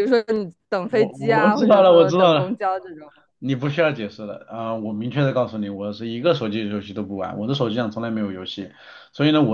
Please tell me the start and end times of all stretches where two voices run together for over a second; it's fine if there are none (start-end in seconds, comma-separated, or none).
0.9-2.5